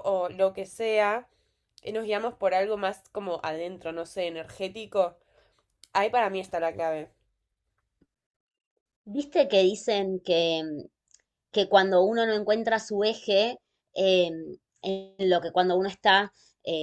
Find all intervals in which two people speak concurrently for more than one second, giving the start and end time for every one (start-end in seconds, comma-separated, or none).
none